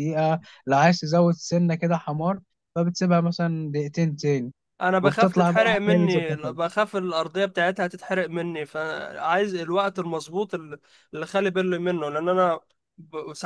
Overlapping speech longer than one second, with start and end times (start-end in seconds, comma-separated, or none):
5.0-6.5